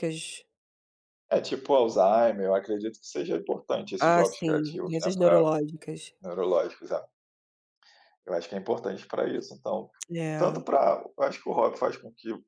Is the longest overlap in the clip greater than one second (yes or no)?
yes